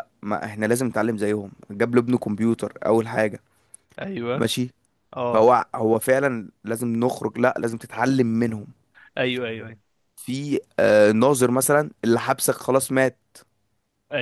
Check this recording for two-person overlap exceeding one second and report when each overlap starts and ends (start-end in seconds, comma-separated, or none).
none